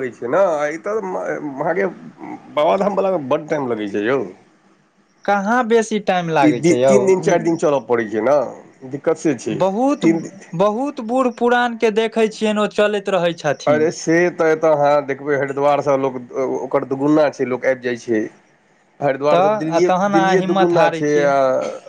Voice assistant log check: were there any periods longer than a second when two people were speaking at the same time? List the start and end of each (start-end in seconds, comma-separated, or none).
19.4-21.3